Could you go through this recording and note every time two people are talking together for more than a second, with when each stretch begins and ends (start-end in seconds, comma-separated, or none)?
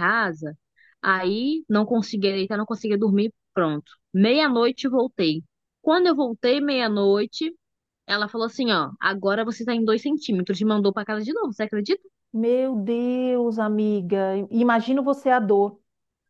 none